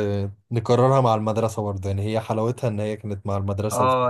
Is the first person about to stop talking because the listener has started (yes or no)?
yes